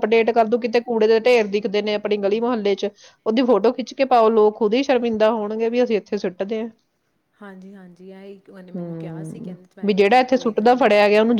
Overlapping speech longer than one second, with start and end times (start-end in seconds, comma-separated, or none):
8.8-10.8